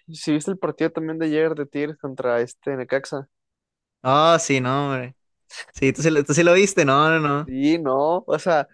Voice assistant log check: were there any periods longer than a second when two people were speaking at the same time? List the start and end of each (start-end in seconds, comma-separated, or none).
none